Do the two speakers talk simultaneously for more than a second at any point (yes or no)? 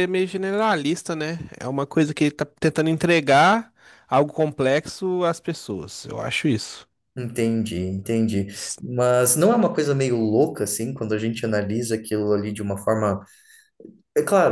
no